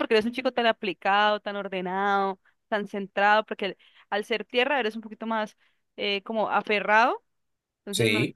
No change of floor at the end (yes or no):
yes